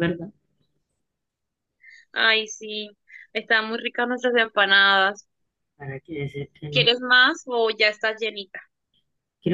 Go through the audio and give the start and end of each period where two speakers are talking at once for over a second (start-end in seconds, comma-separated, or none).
none